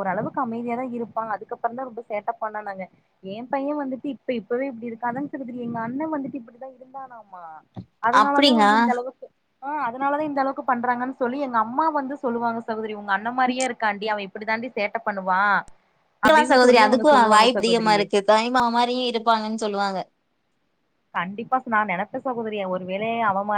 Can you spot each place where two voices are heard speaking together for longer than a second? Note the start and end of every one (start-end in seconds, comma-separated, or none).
16.3-18.0